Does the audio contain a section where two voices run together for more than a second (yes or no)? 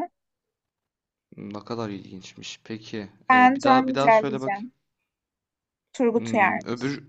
yes